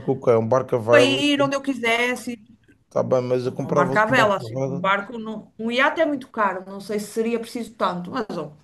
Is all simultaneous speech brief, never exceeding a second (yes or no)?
no